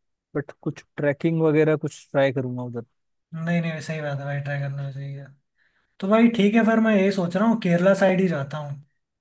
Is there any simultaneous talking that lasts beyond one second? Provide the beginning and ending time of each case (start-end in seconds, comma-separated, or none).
none